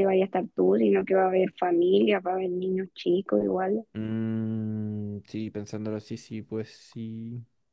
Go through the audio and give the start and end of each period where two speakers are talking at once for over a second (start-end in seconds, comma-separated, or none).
none